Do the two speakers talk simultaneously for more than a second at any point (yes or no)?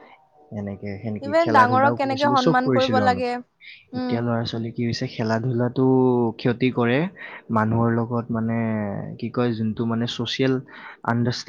yes